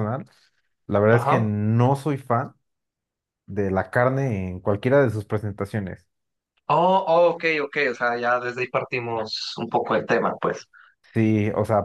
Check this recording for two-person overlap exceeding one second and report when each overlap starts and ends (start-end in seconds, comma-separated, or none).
none